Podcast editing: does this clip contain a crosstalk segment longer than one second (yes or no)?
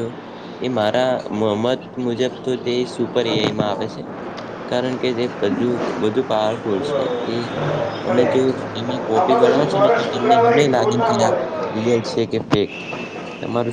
yes